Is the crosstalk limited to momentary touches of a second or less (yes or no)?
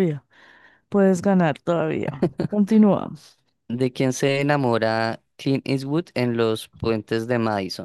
yes